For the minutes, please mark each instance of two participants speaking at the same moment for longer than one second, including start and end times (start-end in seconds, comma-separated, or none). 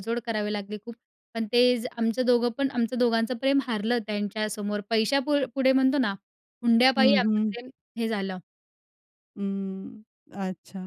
none